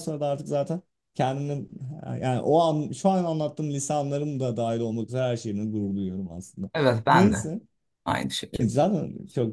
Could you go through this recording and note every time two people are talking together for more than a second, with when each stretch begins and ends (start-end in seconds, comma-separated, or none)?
none